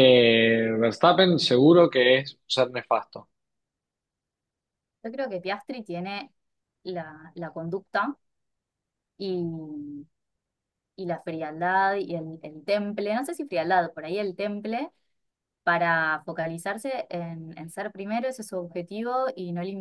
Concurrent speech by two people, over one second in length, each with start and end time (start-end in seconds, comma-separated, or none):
none